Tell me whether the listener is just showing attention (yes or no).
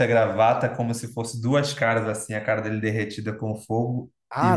no